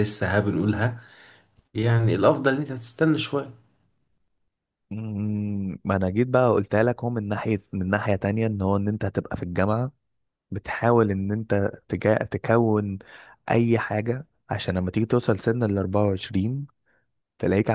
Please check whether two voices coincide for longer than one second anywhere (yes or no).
no